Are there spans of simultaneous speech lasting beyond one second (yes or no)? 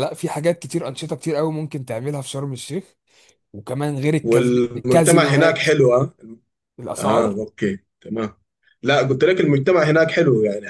yes